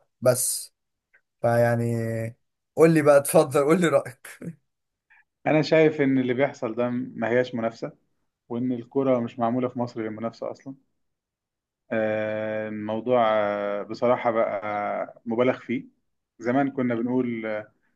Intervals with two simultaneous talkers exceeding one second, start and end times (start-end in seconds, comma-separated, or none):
none